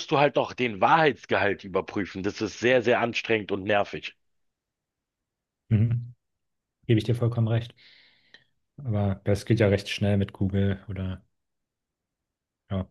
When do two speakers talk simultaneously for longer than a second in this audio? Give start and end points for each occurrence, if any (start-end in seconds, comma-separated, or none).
none